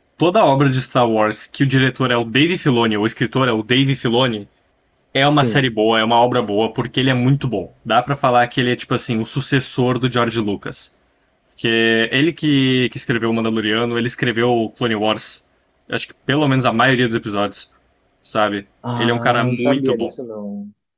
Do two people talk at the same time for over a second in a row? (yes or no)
yes